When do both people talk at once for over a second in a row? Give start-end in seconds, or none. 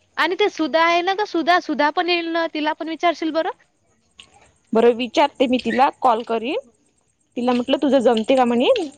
none